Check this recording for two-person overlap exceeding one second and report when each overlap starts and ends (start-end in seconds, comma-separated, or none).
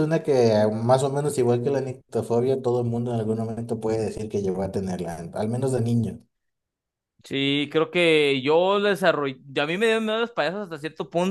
none